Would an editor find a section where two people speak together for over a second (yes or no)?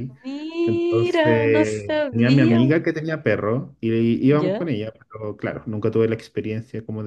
yes